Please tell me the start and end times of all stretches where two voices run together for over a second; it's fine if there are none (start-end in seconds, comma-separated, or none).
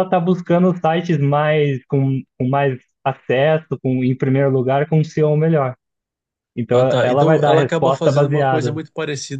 6.7-8.8